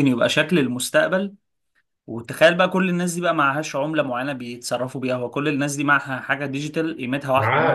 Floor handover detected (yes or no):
yes